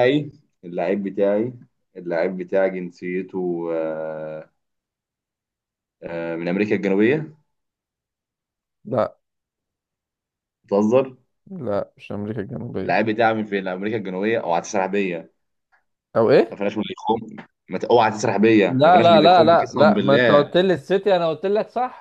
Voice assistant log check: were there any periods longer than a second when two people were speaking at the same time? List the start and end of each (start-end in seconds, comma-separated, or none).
18.7-20.5